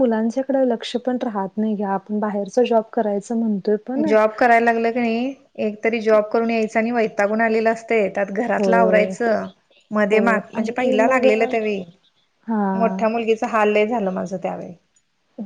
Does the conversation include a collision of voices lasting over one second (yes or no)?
no